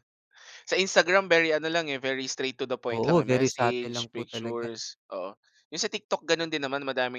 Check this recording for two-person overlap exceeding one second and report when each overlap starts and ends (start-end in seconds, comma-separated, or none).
2.9-4.7